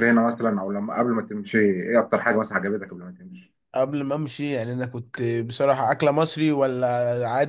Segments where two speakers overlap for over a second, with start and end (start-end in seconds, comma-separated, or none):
none